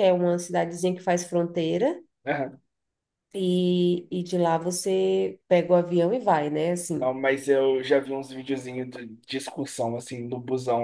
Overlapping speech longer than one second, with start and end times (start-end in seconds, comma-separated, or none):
none